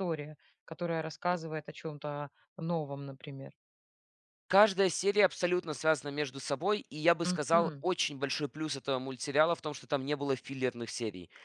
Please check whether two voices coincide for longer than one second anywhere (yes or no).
no